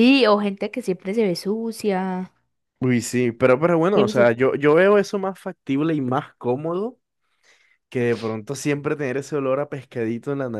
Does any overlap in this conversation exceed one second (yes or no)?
no